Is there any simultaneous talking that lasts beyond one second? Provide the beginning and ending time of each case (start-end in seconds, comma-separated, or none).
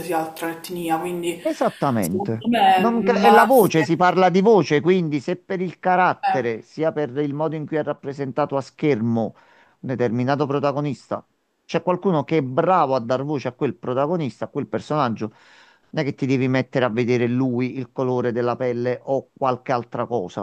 2.0-4.0